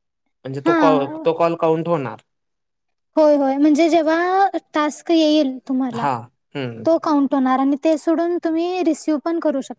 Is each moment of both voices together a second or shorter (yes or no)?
yes